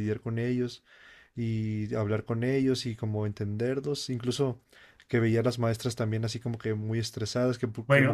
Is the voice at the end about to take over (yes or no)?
yes